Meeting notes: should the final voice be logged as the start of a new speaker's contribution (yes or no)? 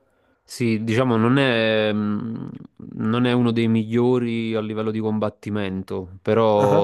no